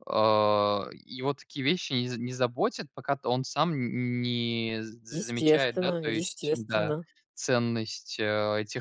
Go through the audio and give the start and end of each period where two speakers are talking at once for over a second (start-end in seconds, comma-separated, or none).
5.1-7.0